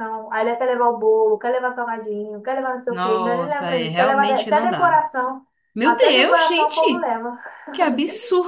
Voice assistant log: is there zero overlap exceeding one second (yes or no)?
no